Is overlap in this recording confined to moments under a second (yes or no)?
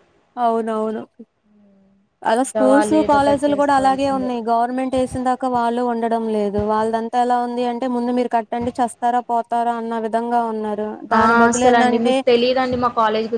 no